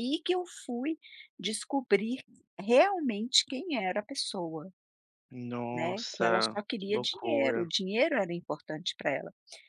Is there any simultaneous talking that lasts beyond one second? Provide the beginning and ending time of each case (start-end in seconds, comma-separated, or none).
5.7-7.7